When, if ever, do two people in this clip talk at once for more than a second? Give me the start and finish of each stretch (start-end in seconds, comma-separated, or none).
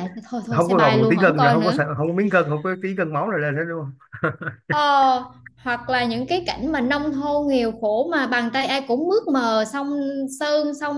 0.5-1.8